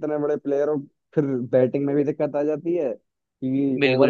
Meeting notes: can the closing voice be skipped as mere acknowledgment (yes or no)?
yes